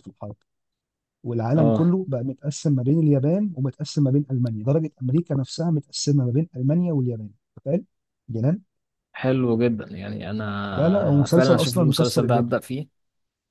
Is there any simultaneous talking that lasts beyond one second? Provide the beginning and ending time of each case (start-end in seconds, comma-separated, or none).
10.8-12.6